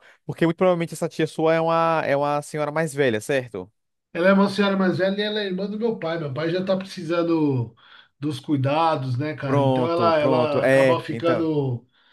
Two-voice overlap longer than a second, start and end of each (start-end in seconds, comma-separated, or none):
9.4-11.5